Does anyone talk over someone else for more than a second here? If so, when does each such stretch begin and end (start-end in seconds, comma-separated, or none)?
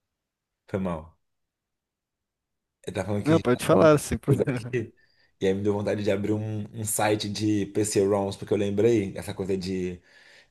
3.2-4.8